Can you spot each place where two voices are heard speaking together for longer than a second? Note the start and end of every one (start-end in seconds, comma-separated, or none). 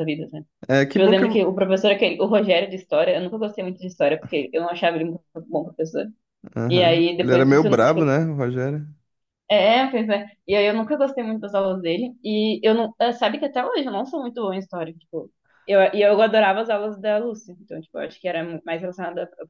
6.7-8.2